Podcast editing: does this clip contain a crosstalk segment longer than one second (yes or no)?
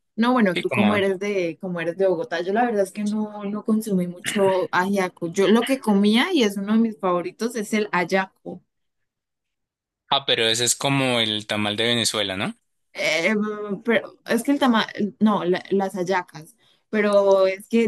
no